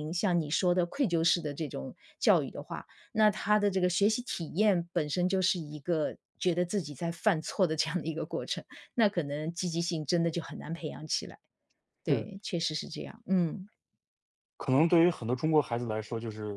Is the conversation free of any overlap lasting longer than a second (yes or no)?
yes